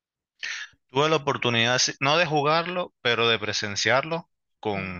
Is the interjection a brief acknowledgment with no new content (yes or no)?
yes